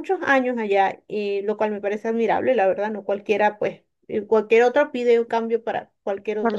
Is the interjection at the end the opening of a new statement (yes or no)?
yes